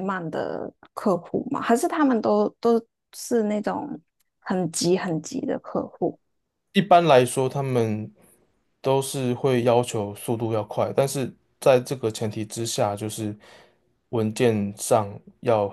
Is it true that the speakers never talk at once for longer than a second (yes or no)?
yes